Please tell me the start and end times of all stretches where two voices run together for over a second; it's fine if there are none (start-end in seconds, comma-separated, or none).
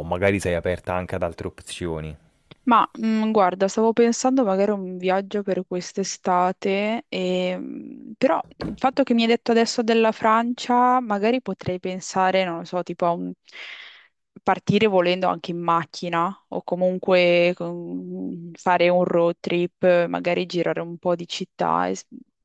none